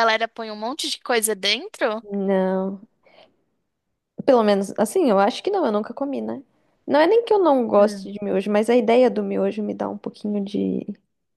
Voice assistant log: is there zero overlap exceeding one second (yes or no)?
yes